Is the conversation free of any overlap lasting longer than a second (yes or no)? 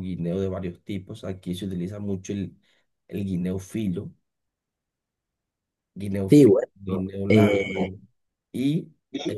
no